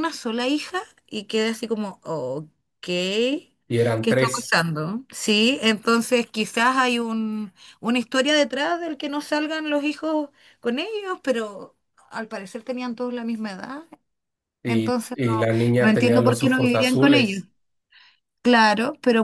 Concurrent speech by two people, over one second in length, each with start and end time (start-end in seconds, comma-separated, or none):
15.8-17.4